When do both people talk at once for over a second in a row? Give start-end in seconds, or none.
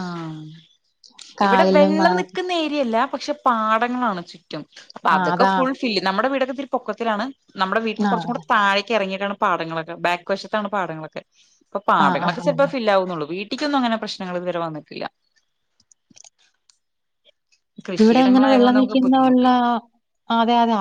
18.0-19.4